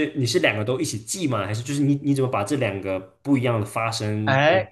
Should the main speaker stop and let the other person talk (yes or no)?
yes